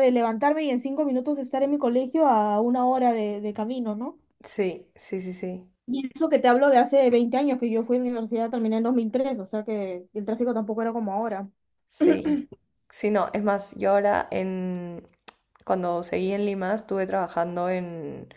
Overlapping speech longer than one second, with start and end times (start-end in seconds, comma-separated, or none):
none